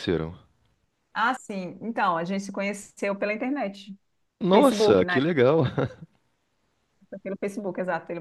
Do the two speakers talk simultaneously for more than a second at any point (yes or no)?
no